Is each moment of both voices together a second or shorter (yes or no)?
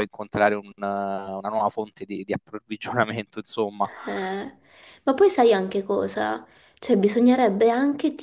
yes